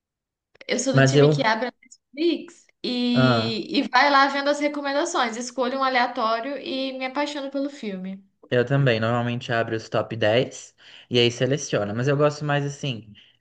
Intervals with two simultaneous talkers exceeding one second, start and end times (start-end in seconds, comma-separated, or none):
none